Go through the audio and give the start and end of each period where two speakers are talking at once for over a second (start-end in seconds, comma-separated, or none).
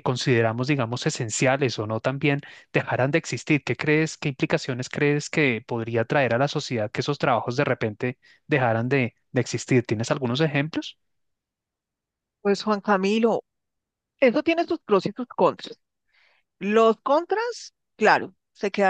none